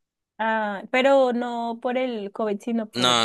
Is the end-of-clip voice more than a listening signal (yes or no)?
yes